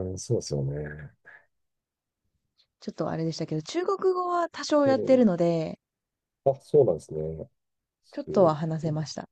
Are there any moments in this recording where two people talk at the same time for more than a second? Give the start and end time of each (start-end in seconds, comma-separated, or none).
none